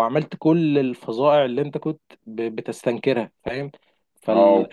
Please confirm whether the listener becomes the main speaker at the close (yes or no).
yes